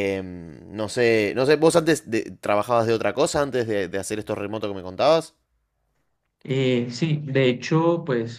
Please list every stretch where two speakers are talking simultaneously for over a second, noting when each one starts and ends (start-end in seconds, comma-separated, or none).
none